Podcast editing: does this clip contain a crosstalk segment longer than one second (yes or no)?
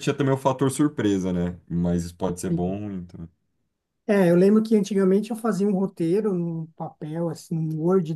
no